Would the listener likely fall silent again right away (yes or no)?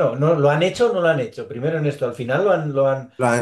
no